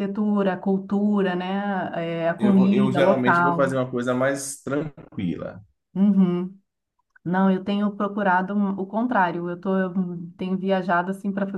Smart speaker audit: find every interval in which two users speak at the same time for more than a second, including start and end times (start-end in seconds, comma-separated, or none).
2.4-3.7